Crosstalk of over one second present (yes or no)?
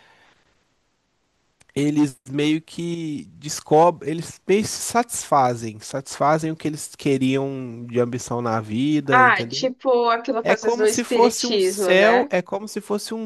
yes